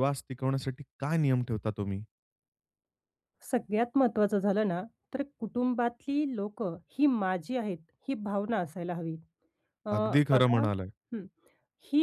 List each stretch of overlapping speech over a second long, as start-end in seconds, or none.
none